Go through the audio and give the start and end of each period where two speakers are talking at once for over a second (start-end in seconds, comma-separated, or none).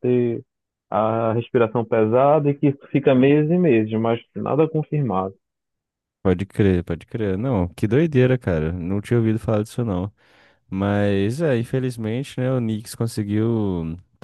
none